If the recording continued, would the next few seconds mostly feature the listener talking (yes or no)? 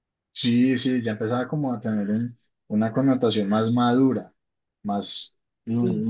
no